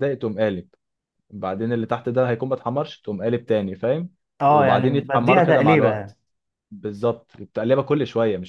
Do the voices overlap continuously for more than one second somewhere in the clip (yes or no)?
yes